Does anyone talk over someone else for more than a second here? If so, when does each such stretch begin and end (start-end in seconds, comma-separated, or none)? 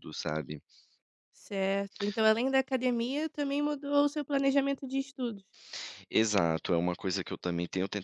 none